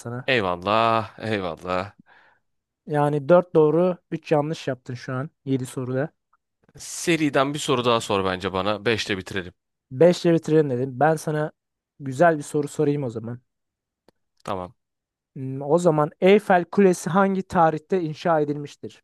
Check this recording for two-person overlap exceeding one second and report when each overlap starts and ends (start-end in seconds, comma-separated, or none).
none